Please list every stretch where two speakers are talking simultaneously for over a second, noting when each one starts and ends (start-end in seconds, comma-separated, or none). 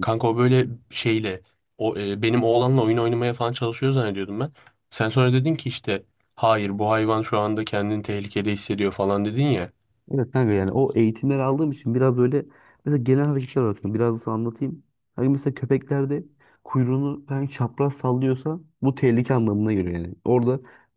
none